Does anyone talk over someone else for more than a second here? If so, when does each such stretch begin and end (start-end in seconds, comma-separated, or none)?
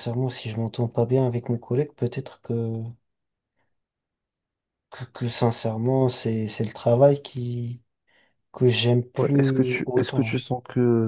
9.2-10.4